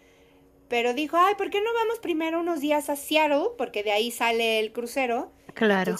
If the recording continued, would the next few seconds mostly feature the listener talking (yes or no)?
no